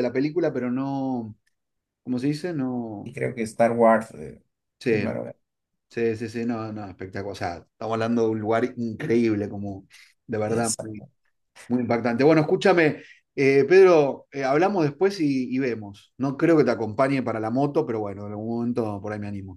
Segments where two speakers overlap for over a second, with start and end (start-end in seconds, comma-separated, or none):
none